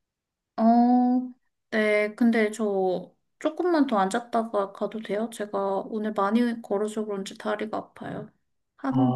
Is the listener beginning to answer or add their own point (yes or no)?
no